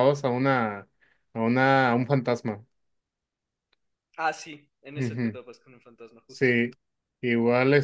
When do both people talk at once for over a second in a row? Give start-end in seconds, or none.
none